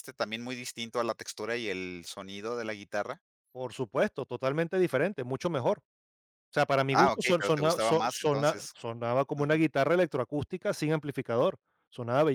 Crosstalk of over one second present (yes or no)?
yes